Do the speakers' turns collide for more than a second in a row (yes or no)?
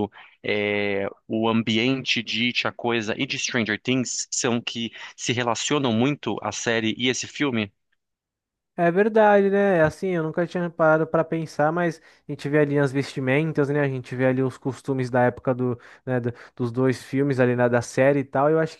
no